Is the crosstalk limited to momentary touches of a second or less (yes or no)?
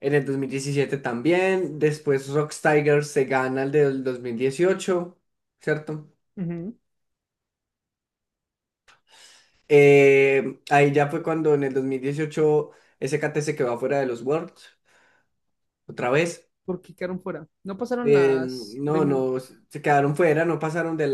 no